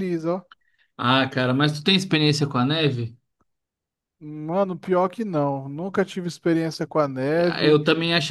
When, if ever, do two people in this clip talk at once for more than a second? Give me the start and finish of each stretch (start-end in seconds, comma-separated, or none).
none